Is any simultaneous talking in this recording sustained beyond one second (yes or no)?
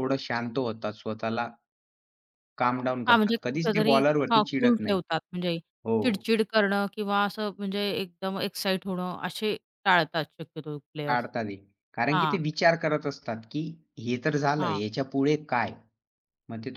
yes